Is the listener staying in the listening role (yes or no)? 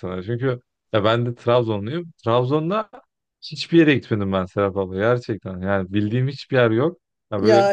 yes